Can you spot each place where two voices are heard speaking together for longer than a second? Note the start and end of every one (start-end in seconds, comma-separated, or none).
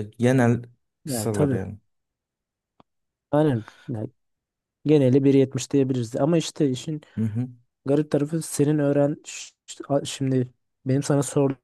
none